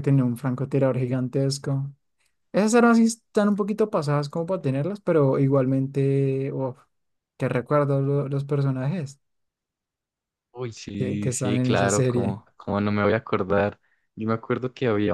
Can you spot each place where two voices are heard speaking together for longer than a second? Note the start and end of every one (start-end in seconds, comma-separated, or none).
11.0-12.4